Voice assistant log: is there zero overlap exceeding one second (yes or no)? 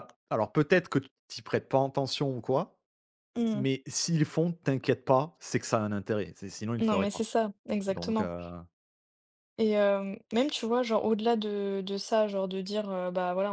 yes